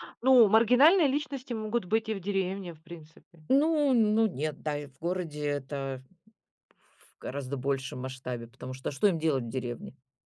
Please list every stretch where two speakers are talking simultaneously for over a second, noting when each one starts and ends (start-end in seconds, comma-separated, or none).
none